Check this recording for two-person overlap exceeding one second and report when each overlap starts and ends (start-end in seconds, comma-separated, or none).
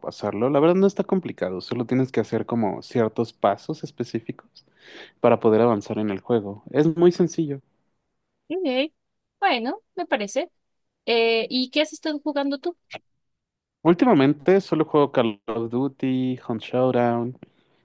none